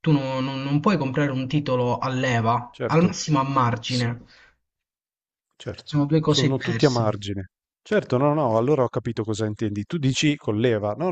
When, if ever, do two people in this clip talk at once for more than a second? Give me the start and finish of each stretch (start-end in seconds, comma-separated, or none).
5.8-7.2